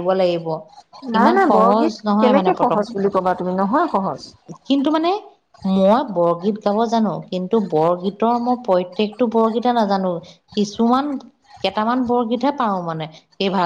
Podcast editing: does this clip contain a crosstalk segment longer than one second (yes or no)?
yes